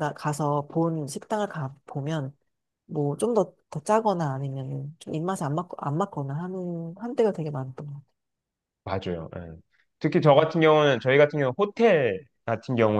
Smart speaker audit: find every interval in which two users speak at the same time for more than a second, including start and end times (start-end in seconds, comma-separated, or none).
none